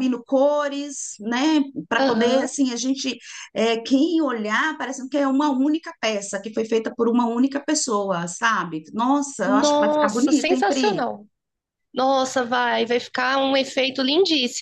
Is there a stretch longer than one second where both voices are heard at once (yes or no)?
yes